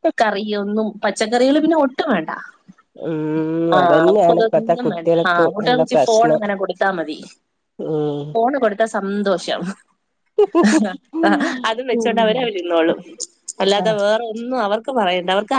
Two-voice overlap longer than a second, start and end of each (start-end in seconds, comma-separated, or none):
3.8-6.4